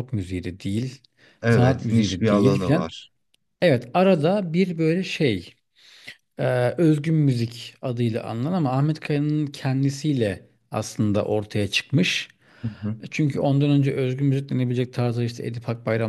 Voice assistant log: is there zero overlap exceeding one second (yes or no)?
no